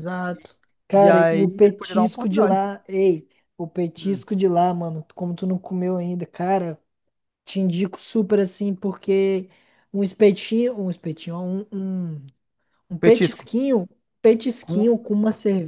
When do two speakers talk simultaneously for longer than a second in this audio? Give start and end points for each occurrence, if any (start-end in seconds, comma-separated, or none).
0.9-2.6